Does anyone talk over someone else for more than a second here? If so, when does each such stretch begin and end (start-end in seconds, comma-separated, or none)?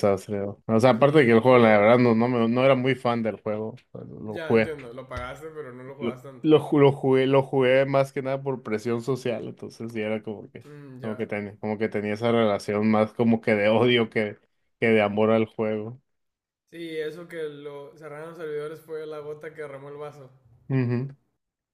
0.9-2.3